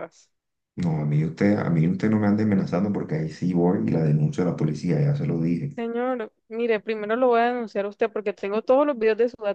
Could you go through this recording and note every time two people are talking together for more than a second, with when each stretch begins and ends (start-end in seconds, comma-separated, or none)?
none